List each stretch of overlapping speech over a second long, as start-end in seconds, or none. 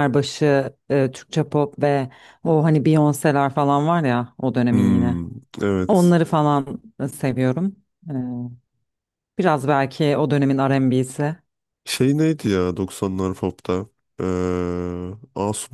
none